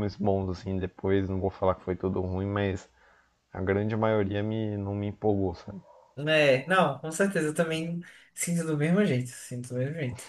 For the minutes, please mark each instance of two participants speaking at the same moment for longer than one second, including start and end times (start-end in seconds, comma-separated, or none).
none